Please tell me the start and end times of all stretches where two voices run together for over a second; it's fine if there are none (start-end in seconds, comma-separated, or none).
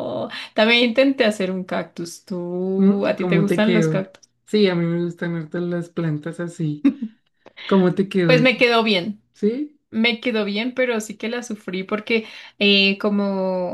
2.8-4.1